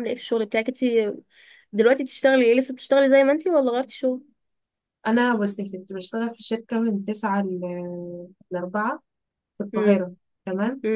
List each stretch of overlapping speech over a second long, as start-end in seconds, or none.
none